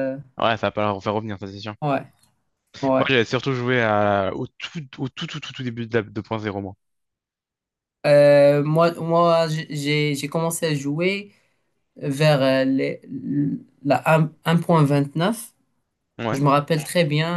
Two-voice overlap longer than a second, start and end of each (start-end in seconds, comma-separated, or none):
none